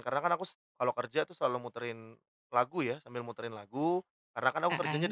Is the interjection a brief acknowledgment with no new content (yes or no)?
yes